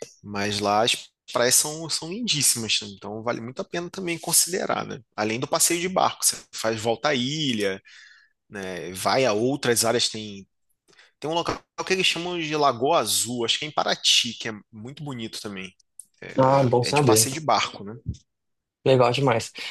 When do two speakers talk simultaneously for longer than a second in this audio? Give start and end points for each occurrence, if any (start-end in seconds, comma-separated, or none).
none